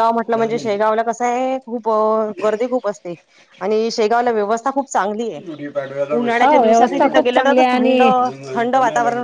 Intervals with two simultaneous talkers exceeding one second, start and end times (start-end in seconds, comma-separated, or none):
6.4-8.0